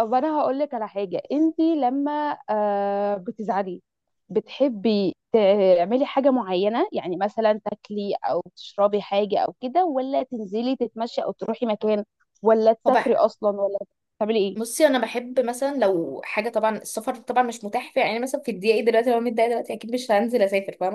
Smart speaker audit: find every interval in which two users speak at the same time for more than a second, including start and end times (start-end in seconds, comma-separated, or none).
none